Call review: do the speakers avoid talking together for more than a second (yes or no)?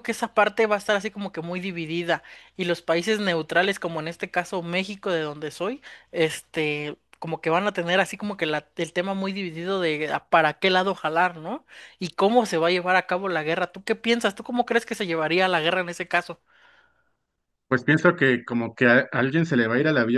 yes